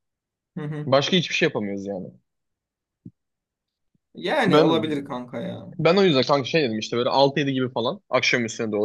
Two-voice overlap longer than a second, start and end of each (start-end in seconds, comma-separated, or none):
none